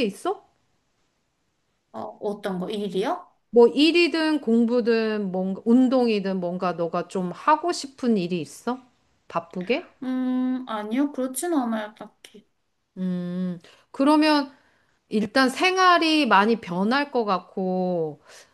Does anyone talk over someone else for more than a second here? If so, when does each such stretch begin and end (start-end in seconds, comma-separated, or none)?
none